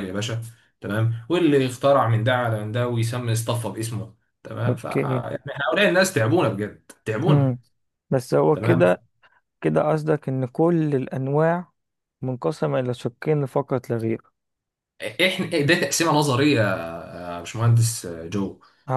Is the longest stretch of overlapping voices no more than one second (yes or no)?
yes